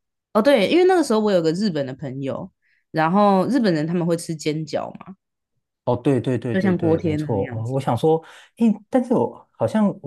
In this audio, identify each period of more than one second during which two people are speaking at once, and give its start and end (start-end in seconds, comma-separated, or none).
6.5-7.8